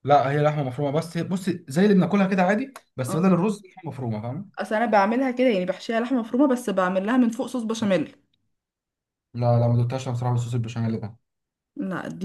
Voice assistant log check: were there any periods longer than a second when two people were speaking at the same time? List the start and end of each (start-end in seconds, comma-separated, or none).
none